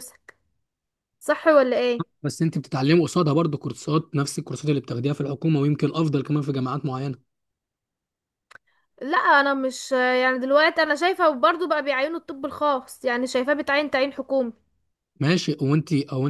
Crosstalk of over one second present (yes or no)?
no